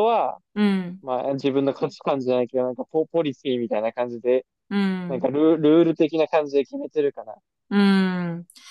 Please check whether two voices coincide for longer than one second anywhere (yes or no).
no